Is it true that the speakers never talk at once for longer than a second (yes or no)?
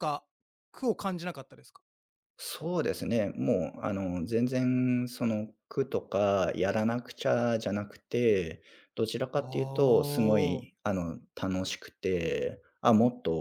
no